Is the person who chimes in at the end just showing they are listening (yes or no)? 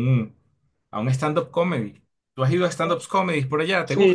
no